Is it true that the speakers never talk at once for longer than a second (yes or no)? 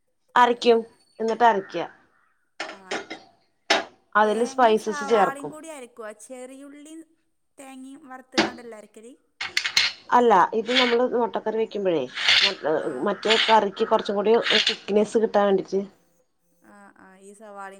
no